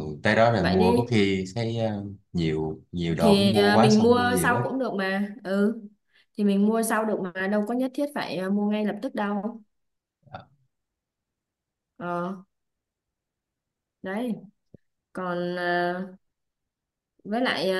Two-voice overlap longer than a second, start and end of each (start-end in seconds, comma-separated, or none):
3.2-4.6